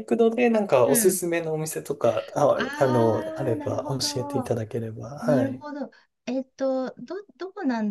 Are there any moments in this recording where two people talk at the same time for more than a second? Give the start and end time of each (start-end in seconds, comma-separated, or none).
2.5-4.6